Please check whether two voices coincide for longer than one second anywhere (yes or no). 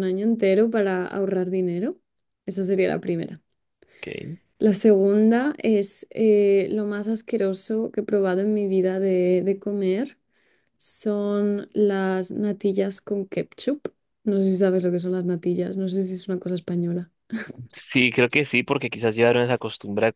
no